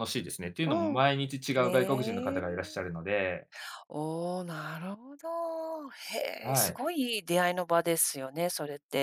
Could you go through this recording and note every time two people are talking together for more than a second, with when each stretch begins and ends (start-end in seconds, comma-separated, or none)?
1.6-2.9